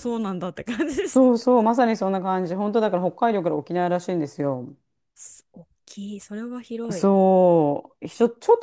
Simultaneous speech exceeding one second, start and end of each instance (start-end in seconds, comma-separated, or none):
none